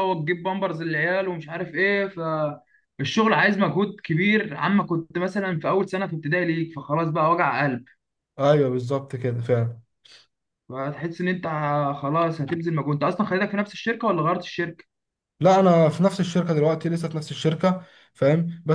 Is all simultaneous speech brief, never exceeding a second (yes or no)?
yes